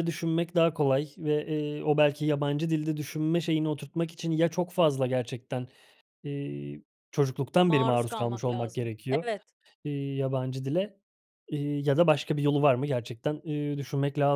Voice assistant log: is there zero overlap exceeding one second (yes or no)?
no